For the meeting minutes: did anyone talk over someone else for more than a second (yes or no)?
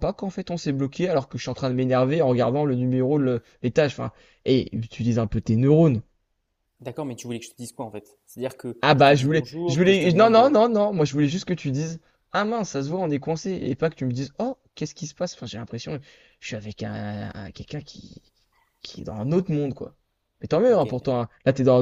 yes